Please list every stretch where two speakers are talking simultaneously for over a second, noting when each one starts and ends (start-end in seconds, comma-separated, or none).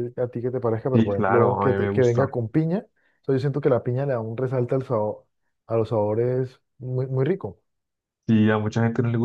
0.9-2.3